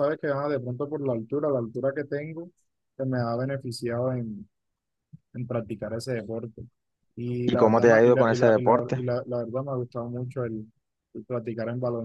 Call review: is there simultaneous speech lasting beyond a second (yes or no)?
yes